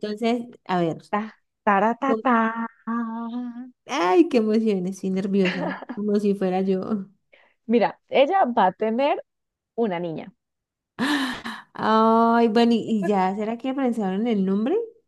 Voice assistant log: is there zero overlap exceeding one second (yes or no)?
yes